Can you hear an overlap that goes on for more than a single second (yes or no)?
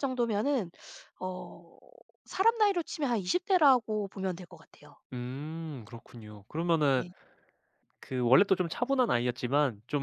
no